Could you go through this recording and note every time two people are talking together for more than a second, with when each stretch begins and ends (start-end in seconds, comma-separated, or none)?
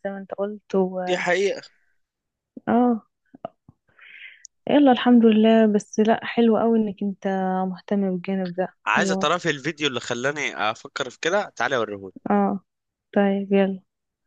none